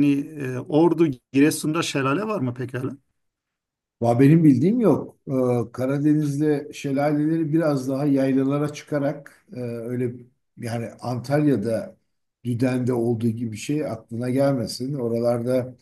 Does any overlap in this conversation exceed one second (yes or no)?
no